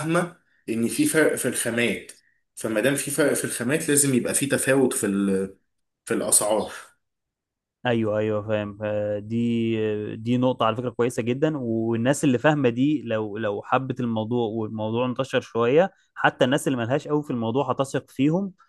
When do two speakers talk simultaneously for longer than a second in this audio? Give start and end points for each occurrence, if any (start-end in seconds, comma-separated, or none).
none